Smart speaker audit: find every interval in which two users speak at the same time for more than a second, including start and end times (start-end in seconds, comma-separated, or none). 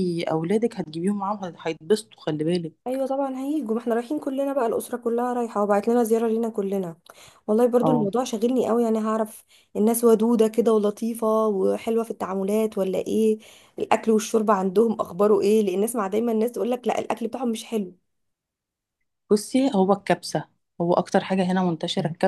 none